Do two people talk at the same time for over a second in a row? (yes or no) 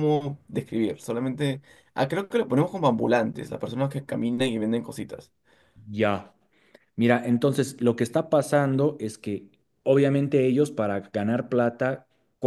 no